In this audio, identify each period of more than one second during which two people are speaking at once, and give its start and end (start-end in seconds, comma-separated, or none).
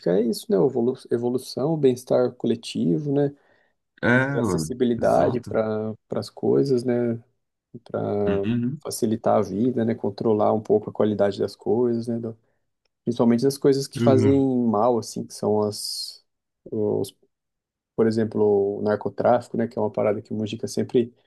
4.3-5.6